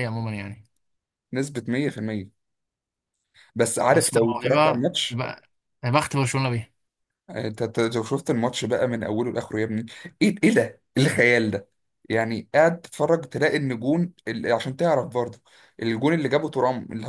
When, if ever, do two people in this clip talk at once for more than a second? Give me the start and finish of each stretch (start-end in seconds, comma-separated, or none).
3.9-5.2